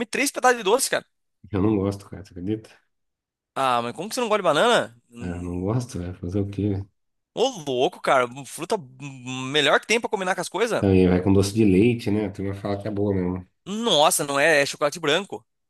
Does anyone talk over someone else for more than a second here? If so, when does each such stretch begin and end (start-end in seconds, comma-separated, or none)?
none